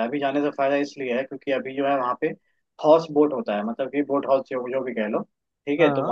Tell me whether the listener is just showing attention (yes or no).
yes